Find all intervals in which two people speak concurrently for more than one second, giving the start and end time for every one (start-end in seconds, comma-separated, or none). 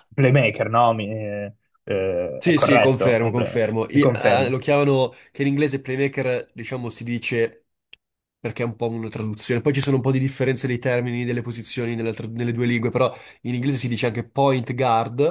2.4-4.6